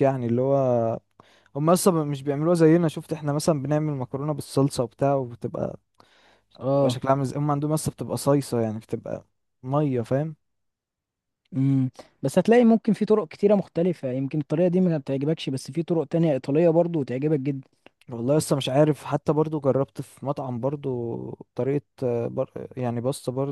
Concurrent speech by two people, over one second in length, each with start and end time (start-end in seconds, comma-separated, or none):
none